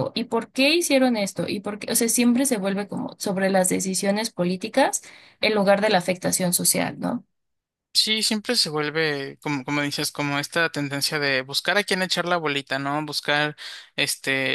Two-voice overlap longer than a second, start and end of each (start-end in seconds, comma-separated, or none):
none